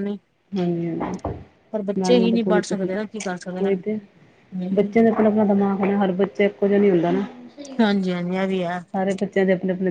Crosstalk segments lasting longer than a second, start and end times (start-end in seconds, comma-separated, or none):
2.0-4.0